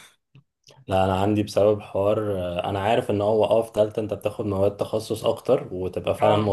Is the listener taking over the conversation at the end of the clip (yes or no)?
no